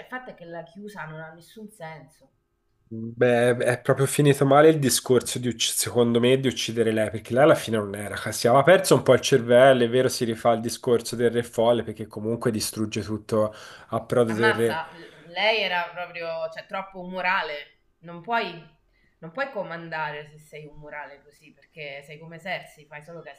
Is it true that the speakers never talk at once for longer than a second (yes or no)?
yes